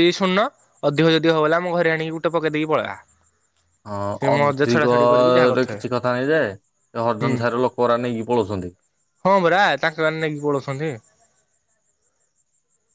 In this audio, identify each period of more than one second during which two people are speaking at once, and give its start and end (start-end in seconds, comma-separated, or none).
4.4-5.8